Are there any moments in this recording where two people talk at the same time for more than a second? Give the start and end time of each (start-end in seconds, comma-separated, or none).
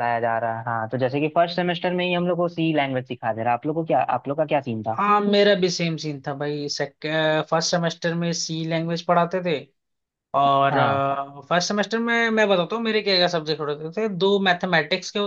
none